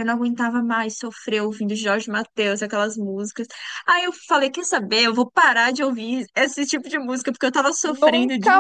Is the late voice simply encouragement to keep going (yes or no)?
no